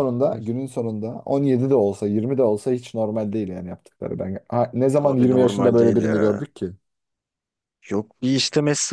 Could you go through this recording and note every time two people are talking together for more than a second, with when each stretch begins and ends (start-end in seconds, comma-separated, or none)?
5.0-6.4